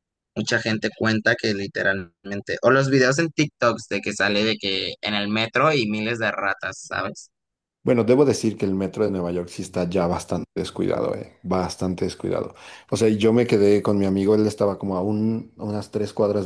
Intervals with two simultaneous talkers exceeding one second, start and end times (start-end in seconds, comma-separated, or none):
none